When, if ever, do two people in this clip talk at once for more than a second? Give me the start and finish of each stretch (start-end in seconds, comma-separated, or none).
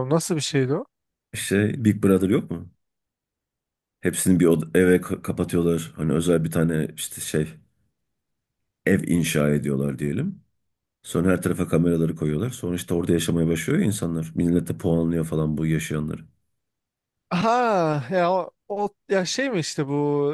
none